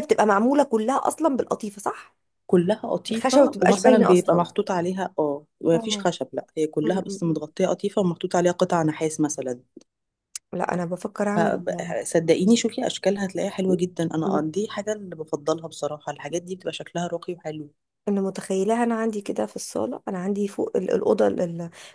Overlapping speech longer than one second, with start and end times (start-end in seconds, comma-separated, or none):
3.1-4.5